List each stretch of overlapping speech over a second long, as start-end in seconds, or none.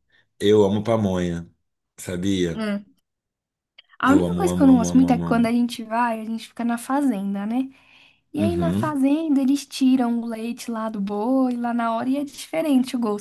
4.0-5.5